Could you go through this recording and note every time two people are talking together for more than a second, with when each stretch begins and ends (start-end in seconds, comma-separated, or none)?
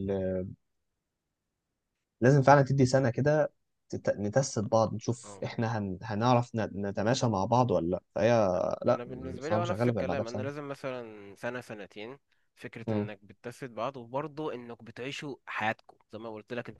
8.9-10.5